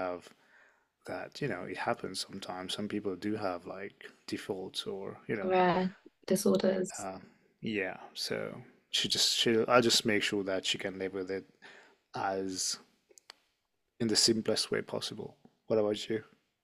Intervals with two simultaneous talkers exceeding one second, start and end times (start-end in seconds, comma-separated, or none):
none